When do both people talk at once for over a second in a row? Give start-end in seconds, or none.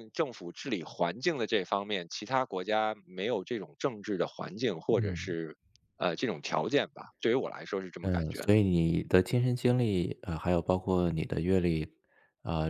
none